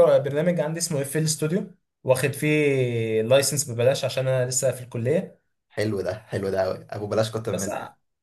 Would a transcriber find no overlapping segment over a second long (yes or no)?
yes